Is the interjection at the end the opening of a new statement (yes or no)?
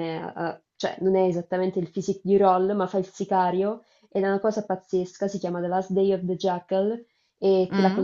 yes